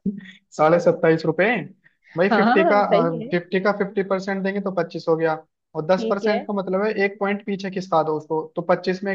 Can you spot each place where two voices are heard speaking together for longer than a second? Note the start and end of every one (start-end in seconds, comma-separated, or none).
none